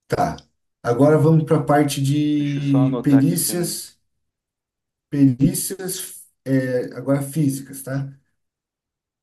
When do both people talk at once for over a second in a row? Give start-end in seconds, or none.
2.4-3.8